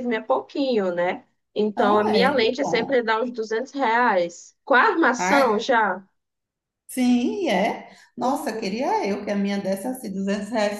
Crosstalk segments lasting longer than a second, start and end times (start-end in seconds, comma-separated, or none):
1.8-3.0